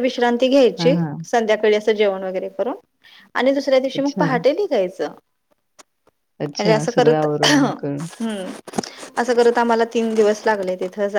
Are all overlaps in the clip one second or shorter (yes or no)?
no